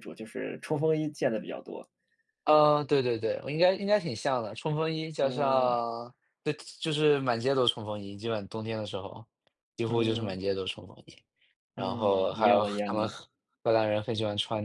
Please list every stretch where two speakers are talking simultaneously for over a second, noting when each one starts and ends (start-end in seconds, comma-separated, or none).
11.8-13.2